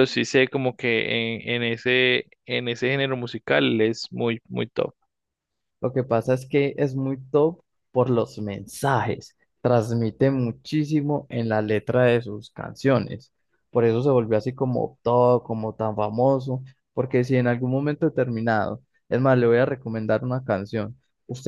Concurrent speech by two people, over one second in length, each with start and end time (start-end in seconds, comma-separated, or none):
none